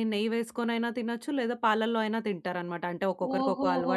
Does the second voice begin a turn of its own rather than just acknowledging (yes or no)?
yes